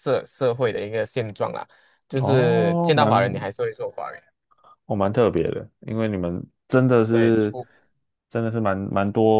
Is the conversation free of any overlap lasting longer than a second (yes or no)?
no